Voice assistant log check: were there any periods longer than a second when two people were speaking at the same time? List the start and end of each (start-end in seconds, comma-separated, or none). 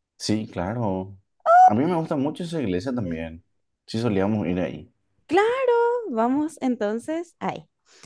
none